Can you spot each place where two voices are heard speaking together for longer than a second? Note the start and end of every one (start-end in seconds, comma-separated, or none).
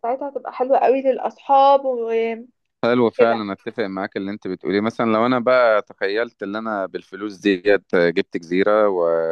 none